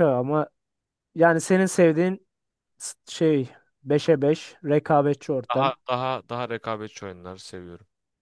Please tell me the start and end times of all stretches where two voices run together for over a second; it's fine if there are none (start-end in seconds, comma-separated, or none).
none